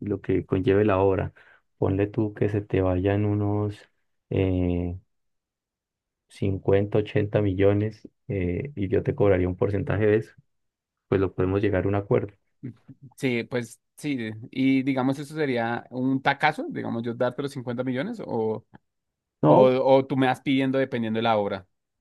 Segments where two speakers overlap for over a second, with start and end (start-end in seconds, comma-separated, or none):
none